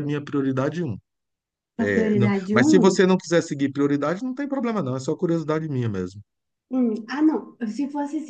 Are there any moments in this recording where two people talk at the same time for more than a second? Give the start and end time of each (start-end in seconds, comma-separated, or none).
1.8-3.1